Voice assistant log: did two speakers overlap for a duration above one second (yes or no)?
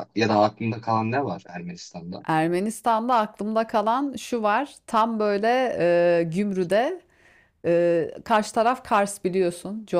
no